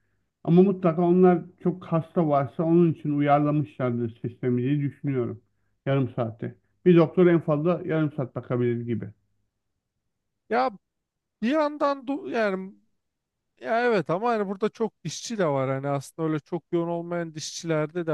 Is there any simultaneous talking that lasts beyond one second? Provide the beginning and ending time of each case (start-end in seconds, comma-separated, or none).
none